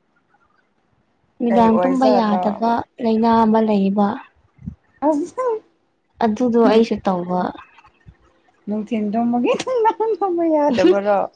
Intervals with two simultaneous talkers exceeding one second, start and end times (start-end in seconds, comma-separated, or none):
1.5-2.7